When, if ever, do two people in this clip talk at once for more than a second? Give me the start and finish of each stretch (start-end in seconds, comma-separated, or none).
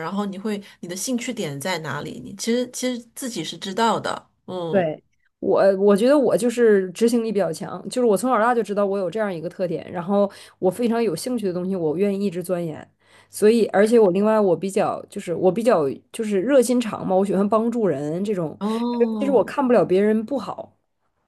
none